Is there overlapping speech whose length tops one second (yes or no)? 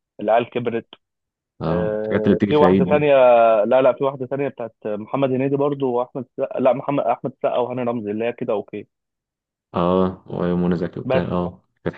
yes